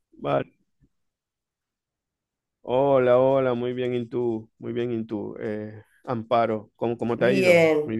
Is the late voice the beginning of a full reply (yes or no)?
yes